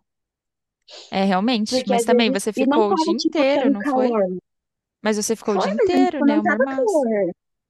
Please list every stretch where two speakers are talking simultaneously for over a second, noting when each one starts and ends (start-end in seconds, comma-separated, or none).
1.7-4.2, 5.5-7.1